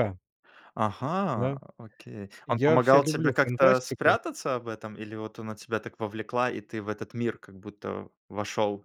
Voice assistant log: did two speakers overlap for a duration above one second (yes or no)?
yes